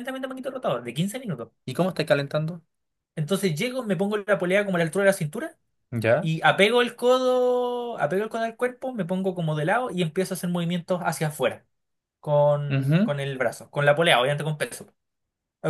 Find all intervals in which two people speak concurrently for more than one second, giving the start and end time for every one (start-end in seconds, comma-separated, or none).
none